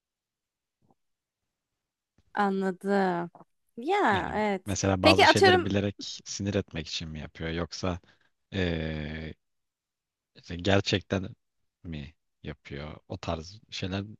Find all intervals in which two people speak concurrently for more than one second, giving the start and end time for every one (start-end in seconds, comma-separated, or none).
4.1-5.7